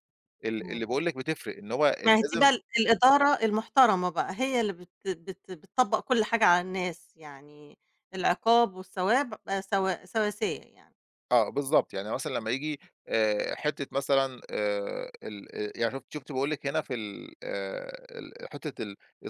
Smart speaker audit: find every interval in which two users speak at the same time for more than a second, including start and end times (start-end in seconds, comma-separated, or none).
none